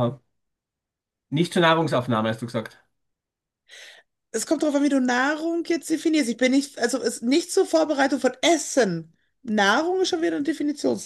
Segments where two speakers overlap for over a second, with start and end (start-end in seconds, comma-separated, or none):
none